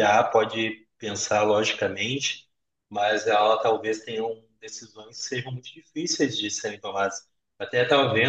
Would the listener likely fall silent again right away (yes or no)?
yes